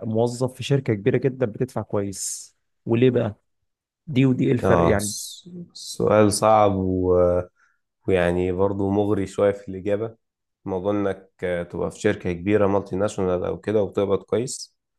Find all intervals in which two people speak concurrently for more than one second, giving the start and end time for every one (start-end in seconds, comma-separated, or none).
none